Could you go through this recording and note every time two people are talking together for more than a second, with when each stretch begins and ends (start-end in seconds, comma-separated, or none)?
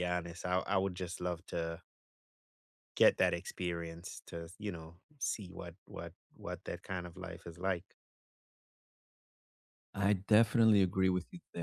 none